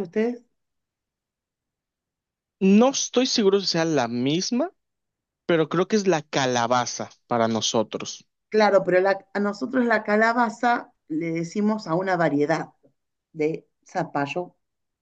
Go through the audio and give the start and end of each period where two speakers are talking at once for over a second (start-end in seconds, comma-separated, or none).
none